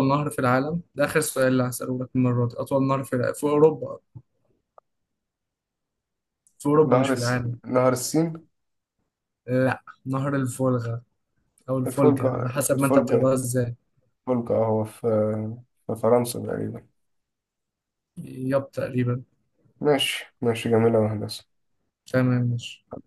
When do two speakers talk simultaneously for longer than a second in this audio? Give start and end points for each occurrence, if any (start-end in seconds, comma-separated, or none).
11.8-13.3